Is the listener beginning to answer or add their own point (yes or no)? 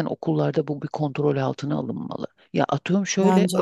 no